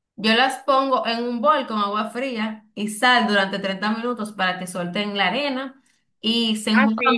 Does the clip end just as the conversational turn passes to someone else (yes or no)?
yes